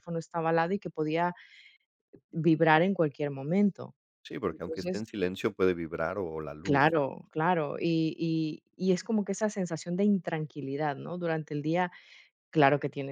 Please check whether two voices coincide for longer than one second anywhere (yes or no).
no